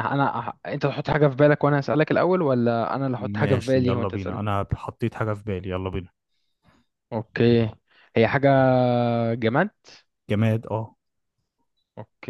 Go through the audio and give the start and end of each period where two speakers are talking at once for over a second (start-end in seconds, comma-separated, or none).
3.2-4.4